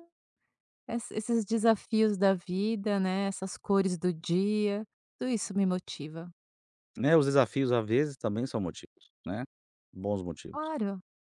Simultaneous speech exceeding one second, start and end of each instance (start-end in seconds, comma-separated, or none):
none